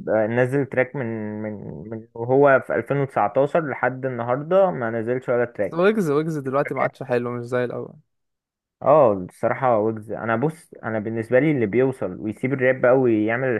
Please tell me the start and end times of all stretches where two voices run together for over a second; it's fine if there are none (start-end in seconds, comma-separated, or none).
none